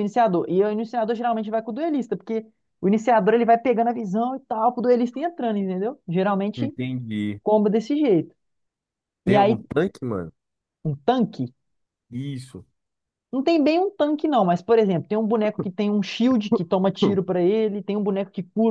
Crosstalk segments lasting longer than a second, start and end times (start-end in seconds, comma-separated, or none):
none